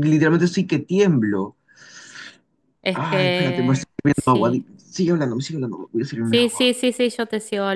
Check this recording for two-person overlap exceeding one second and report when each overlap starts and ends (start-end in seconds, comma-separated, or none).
2.9-4.7